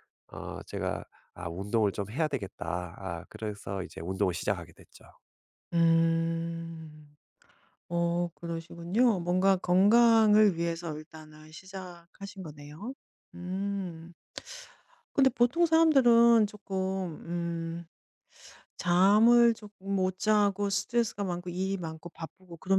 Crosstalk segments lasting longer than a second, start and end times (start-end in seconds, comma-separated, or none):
none